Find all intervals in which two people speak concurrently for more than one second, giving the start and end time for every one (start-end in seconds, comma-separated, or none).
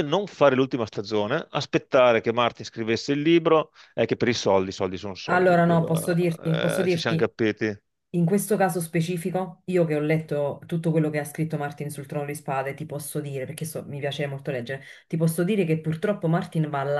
5.2-7.2